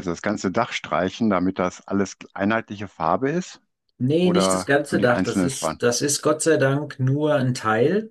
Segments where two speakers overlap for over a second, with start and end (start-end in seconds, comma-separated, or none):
4.2-5.8